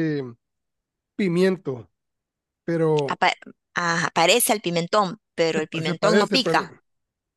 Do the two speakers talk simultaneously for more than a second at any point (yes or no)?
yes